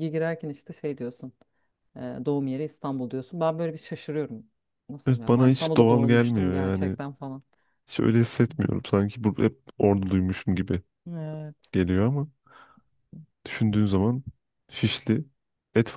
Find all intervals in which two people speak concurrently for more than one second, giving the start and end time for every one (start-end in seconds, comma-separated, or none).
5.1-7.0